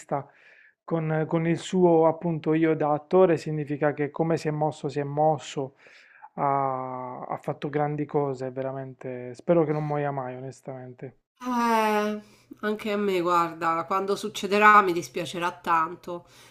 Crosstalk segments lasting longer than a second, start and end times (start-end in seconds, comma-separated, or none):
none